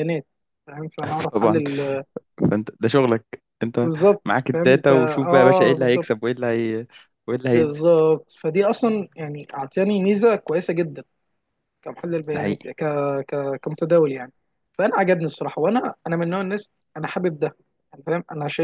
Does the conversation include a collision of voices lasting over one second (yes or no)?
yes